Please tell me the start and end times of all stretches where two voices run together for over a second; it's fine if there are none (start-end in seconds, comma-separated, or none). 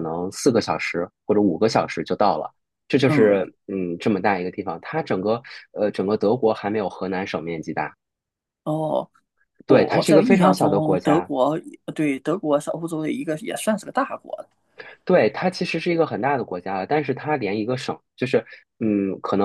9.7-11.3